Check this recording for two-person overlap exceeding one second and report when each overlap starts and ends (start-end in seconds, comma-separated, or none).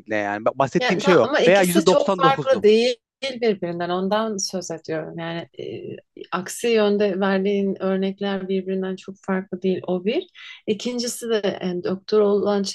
0.8-2.6